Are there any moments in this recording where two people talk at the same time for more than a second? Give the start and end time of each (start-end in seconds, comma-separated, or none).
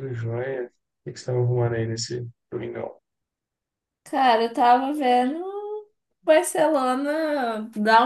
none